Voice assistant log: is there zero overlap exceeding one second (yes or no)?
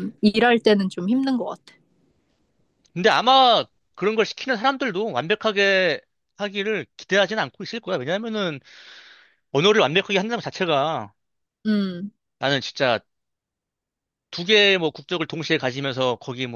yes